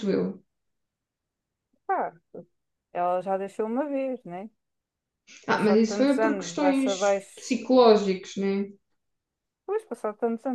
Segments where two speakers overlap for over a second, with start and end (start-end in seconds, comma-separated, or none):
5.5-7.6